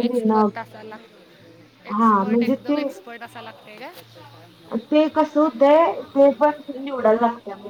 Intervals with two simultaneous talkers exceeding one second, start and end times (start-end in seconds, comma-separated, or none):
none